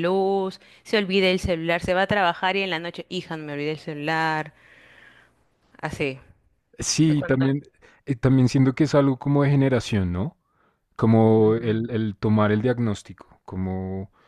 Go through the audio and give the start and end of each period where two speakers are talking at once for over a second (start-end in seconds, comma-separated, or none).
none